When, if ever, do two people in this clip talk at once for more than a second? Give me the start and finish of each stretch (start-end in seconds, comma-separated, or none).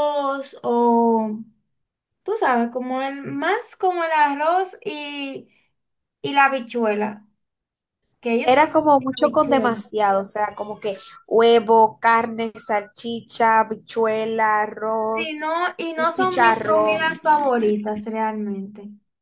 8.4-9.7, 15.1-17.0